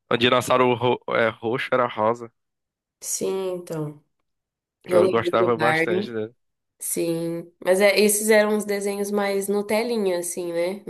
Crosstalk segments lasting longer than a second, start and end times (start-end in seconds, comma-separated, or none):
4.9-6.1